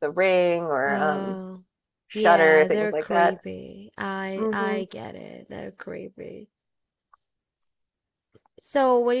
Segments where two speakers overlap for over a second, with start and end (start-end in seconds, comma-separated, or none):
2.1-3.4